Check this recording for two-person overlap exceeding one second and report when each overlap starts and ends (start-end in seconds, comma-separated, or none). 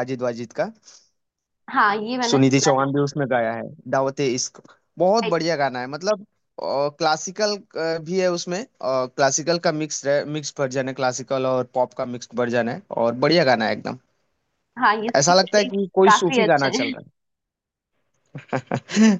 15.2-16.9